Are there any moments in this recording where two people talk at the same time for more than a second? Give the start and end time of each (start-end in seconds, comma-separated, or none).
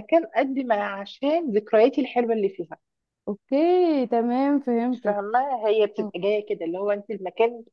none